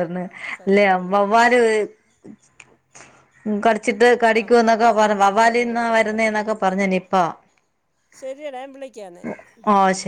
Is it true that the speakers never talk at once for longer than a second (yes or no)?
no